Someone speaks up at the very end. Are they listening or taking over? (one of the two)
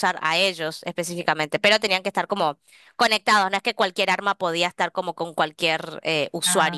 taking over